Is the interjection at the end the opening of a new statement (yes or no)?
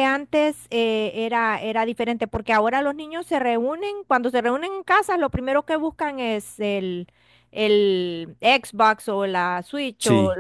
no